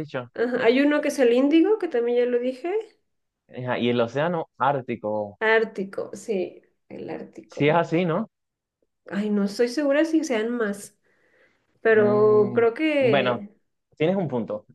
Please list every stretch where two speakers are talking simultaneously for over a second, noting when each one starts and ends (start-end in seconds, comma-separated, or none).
11.9-13.4